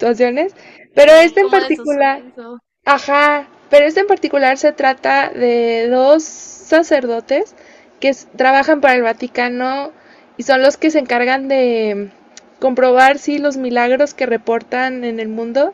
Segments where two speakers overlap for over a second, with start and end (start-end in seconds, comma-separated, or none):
0.9-2.2